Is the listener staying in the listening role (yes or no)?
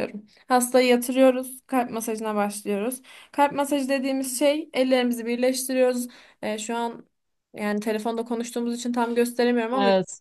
yes